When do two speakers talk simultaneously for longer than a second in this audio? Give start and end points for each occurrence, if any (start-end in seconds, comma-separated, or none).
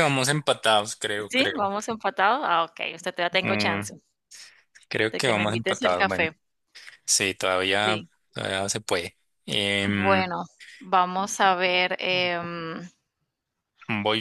5.1-6.3